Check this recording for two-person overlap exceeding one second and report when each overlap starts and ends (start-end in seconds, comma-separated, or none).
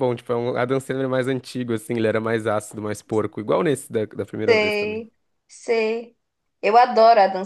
none